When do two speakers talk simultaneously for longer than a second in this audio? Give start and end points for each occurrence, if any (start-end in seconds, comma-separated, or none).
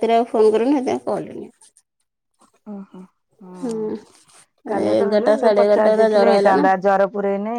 4.9-6.6